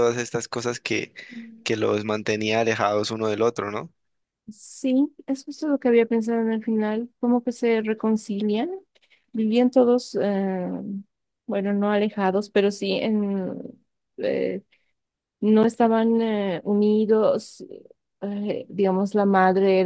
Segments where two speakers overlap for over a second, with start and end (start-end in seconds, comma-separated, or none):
none